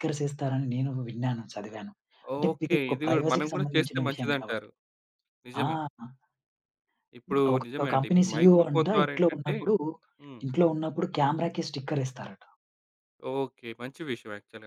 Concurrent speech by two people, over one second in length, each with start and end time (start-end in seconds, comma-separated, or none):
2.5-4.7, 7.5-9.6